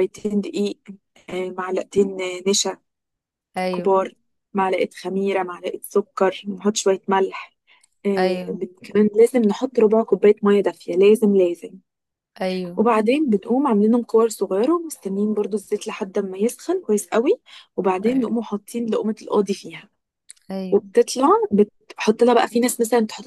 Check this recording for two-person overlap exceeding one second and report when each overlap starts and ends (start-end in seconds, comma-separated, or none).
none